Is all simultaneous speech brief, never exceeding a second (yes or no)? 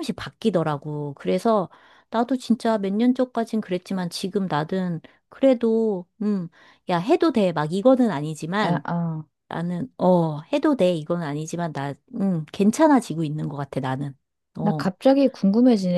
yes